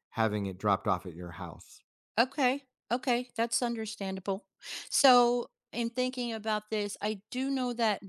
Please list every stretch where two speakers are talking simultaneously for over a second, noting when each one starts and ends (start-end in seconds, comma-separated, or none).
none